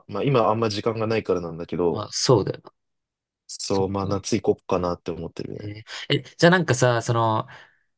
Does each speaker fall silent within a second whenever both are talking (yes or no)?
yes